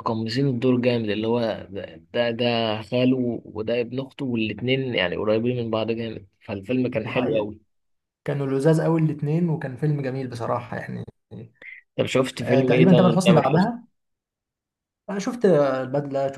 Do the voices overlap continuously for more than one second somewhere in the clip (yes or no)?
yes